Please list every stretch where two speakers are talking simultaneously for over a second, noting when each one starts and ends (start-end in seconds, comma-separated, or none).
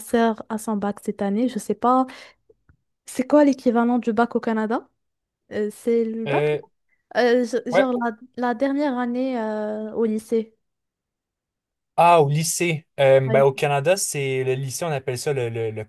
none